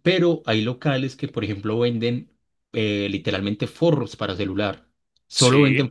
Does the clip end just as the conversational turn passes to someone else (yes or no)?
no